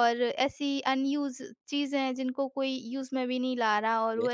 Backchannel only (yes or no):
yes